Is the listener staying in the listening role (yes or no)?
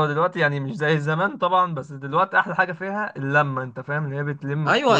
no